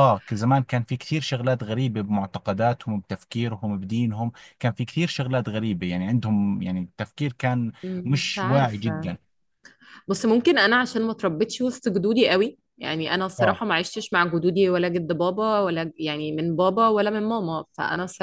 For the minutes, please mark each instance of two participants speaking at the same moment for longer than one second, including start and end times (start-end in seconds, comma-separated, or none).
7.8-9.2